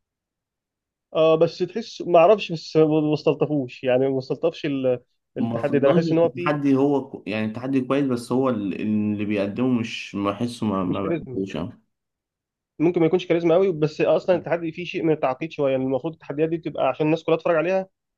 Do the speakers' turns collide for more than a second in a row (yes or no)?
yes